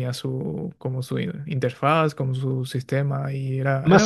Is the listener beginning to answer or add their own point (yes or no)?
yes